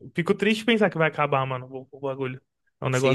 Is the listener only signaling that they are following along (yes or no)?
no